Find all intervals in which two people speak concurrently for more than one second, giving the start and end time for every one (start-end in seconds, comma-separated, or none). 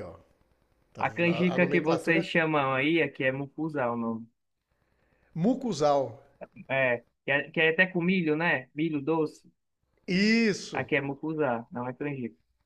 1.0-2.3